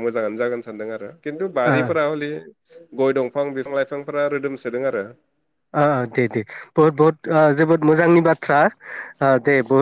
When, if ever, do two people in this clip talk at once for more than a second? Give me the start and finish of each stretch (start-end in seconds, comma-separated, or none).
none